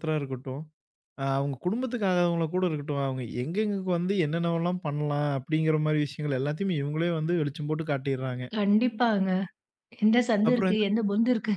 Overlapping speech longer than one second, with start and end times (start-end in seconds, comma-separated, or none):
none